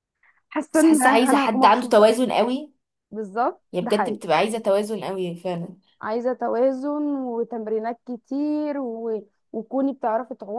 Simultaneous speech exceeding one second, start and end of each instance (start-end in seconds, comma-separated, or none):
0.7-2.2